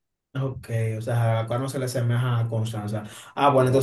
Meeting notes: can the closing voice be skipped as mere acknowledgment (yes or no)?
yes